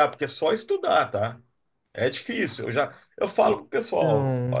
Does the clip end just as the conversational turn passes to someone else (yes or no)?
no